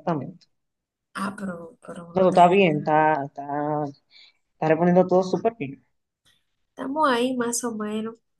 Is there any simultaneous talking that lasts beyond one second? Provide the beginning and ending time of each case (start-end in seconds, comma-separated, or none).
none